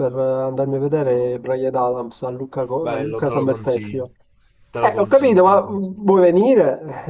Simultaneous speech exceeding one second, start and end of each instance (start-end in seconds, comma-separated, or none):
2.8-4.0, 4.8-6.0